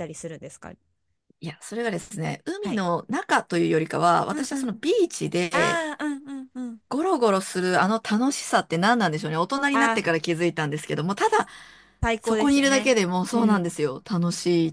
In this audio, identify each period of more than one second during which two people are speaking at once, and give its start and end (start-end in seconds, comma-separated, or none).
12.2-13.7